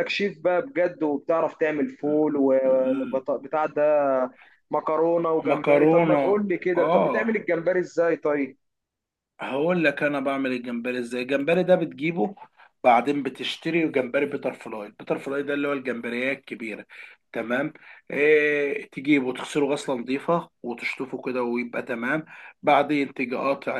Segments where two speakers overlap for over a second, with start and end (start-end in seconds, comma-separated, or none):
5.5-7.3